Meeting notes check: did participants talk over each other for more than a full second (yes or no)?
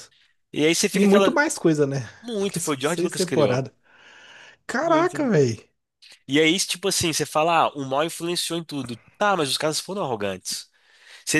yes